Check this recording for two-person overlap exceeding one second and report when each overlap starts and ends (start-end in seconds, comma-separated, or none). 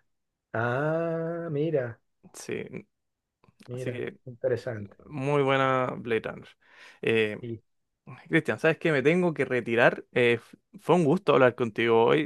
none